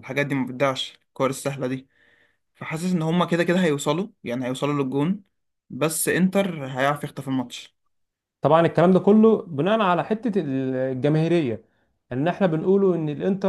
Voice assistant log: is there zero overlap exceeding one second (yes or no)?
yes